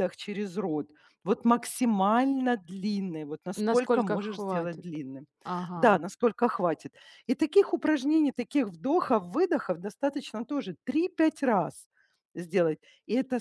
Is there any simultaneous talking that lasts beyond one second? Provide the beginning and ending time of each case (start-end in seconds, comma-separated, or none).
3.6-4.9